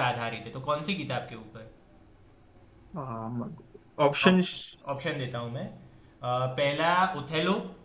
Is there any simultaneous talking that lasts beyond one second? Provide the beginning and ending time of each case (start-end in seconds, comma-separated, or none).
none